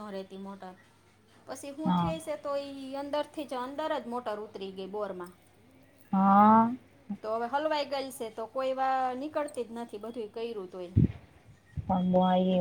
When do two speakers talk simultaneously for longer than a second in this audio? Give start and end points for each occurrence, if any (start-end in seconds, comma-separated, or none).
none